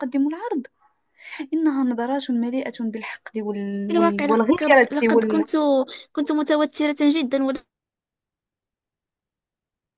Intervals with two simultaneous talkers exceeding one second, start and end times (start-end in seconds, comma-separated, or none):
3.9-5.5